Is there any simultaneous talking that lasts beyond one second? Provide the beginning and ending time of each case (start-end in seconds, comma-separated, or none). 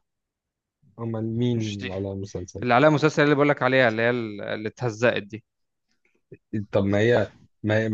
none